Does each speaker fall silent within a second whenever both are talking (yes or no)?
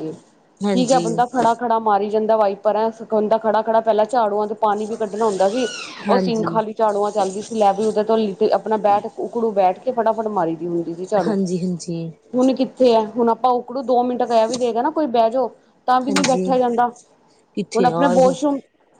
yes